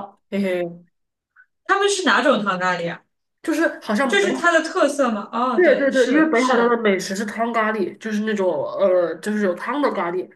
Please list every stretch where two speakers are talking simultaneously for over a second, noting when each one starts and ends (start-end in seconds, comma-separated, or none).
5.5-6.8